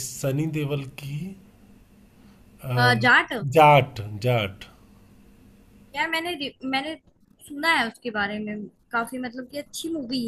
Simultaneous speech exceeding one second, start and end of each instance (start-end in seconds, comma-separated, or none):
none